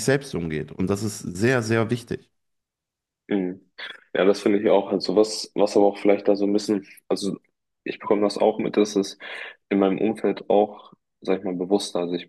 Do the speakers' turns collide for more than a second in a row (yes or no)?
no